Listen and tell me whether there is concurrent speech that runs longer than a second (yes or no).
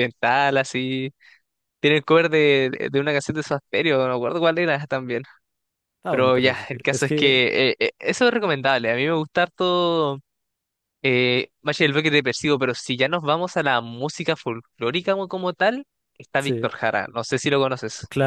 yes